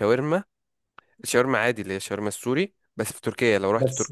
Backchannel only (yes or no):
yes